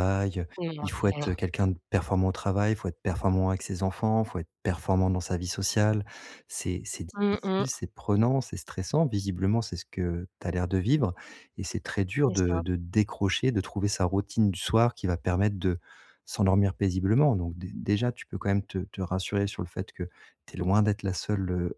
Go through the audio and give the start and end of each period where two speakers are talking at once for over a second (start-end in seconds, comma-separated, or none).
none